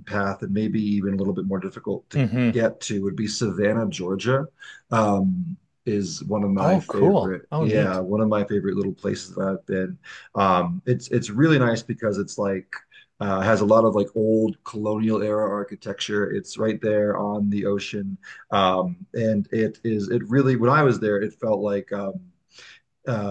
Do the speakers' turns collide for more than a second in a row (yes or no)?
yes